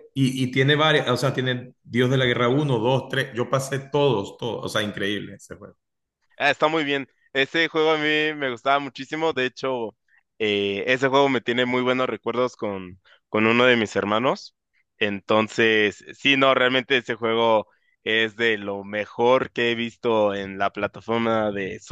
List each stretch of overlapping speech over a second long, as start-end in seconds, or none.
none